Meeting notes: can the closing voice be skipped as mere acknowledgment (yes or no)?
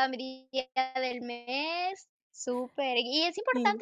yes